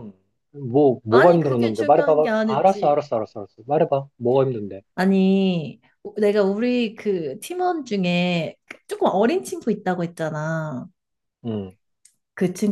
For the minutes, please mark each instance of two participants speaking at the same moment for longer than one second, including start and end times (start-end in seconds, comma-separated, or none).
1.1-3.0